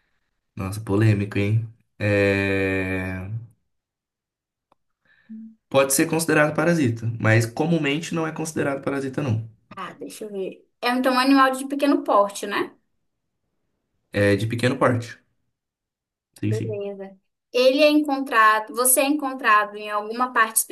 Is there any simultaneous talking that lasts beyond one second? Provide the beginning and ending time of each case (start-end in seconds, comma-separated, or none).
none